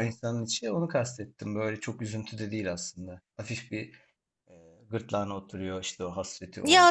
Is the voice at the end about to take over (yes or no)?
yes